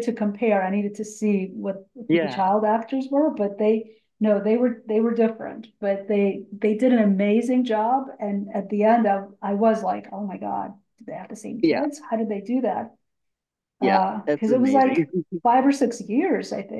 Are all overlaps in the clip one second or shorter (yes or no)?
no